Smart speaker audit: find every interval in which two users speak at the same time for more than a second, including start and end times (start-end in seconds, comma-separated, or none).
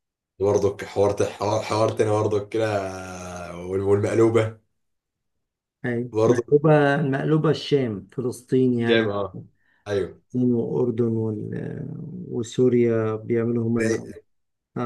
none